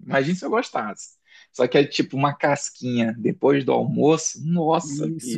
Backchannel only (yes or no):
no